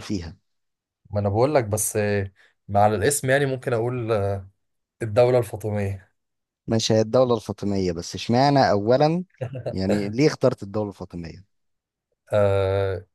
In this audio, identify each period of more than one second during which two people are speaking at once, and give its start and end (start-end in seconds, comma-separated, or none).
none